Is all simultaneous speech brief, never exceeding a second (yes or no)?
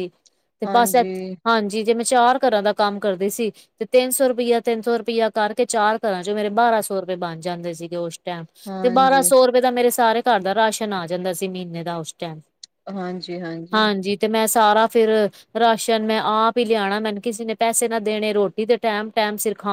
yes